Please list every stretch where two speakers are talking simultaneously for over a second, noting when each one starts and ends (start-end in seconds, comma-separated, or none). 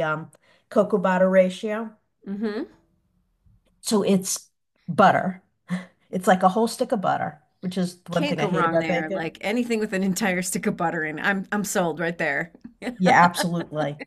8.1-9.3